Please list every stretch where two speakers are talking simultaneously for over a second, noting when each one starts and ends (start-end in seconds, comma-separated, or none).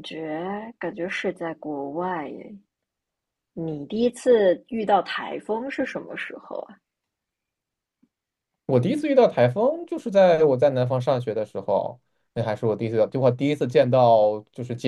none